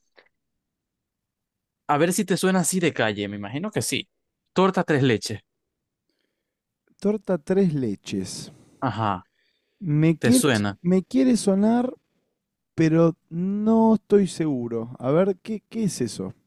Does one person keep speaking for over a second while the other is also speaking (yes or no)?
no